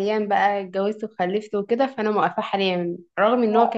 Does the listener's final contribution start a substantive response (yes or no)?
no